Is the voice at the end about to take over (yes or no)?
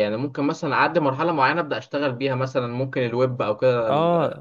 yes